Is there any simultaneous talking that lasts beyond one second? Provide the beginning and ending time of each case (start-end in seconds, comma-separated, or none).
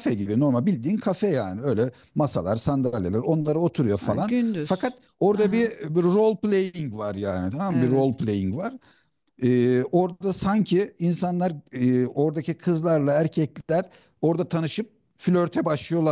4.0-5.7